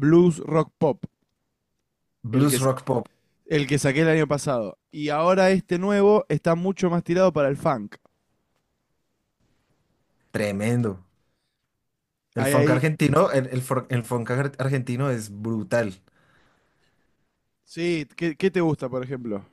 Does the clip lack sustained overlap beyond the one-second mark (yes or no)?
yes